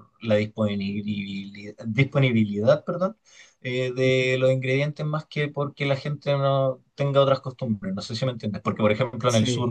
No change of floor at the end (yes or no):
yes